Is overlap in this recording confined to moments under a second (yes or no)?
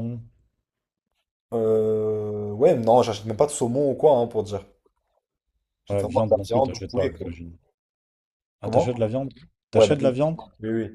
no